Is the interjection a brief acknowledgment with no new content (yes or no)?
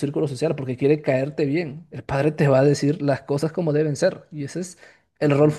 no